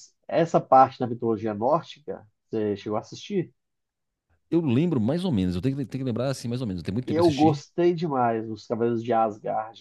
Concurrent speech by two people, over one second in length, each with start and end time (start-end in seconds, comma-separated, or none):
none